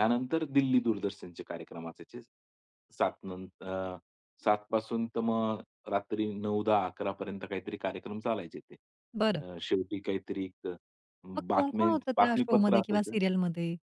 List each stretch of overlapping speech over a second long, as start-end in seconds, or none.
11.5-13.2